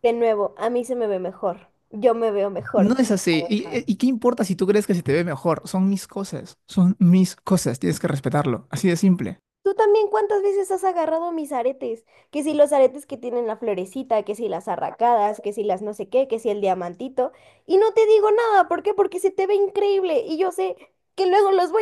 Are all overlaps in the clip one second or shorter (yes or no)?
yes